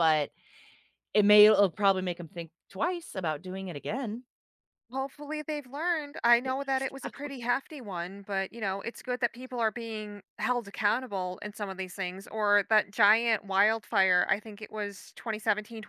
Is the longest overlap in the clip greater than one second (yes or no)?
no